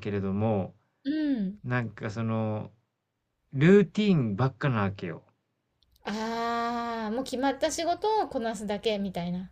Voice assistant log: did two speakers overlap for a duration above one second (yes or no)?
no